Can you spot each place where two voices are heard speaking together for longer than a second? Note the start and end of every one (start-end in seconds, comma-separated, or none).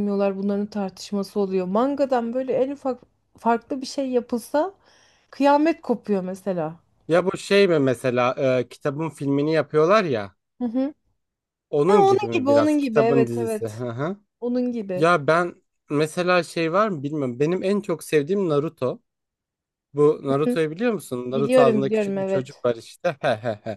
11.9-13.8, 21.3-22.6